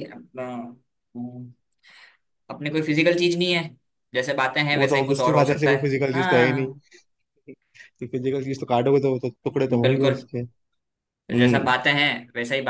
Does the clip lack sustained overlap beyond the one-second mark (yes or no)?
no